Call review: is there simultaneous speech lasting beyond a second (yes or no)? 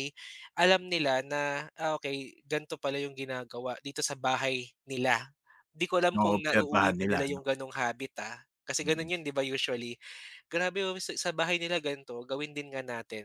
yes